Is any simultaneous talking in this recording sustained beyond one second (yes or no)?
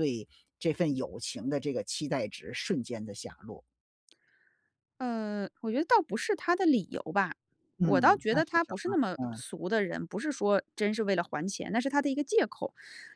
yes